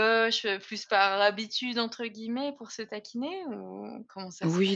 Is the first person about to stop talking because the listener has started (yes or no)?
yes